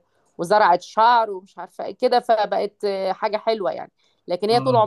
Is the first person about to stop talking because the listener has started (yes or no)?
no